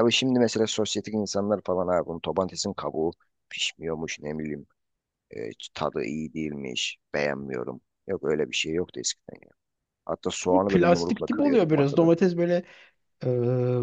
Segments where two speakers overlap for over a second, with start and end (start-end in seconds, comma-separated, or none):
10.5-12.1